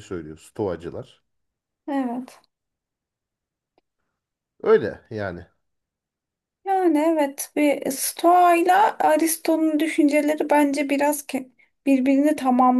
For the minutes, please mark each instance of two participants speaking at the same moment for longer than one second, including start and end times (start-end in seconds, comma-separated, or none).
none